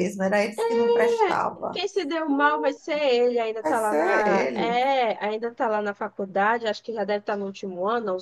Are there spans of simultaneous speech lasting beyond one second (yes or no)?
yes